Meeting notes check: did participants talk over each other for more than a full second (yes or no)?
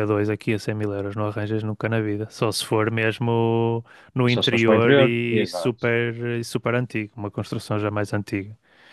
yes